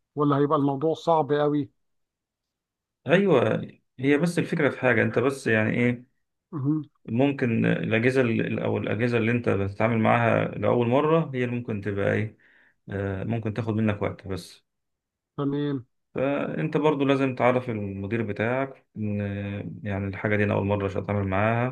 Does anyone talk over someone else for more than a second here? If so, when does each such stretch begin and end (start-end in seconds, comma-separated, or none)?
none